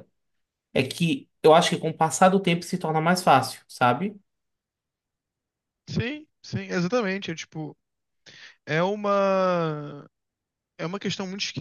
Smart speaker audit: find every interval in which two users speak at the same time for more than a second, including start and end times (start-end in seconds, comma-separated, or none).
none